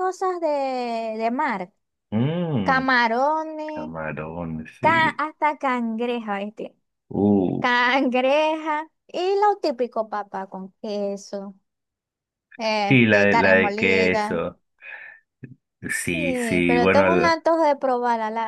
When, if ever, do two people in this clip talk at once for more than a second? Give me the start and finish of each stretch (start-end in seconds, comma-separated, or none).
12.9-14.4, 16.0-17.4